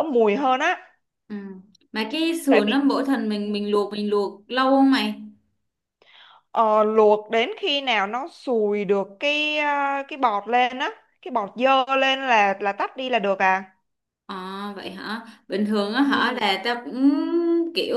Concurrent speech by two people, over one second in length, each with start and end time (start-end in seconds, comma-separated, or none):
none